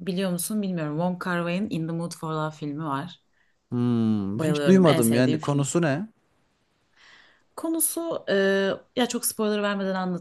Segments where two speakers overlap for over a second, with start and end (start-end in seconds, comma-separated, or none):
4.3-5.7